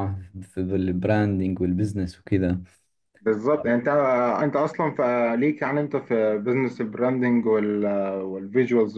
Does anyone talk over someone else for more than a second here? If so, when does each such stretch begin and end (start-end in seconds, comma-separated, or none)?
none